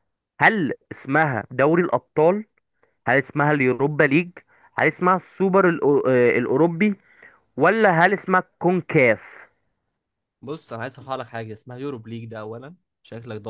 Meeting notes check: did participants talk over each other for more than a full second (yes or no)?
no